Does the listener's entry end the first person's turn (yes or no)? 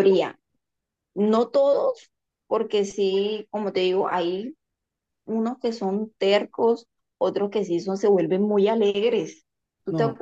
no